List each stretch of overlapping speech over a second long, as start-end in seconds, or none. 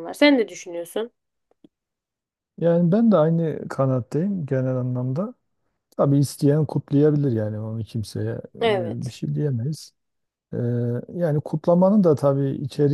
none